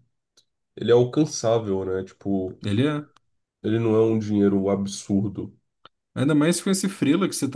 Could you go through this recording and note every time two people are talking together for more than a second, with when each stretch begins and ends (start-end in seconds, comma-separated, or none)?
none